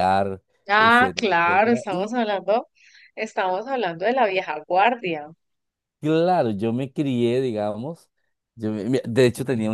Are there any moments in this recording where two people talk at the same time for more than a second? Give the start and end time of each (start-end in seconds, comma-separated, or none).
0.7-2.1